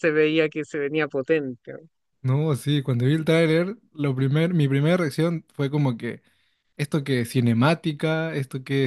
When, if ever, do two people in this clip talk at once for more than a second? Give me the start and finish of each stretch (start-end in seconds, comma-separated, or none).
none